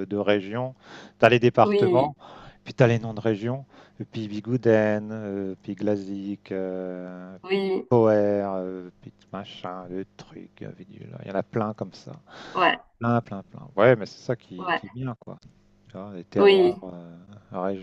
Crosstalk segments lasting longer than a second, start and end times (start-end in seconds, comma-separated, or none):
none